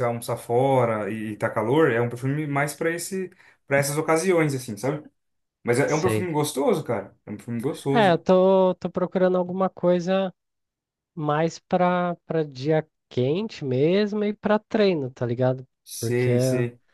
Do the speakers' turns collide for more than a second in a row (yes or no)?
no